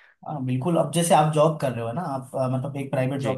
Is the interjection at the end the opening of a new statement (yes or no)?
no